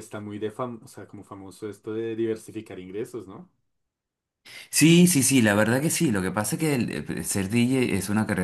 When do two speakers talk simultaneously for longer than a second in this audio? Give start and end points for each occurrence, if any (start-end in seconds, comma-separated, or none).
none